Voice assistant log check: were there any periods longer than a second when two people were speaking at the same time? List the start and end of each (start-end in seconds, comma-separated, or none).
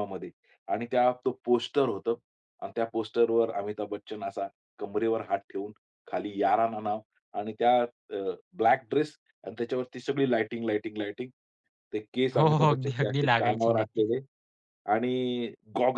12.3-14.1